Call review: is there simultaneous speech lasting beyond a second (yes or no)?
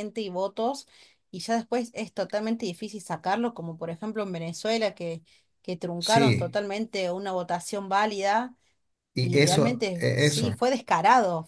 yes